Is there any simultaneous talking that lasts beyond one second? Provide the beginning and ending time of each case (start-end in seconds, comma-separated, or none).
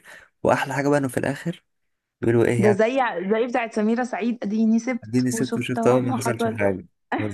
5.0-6.6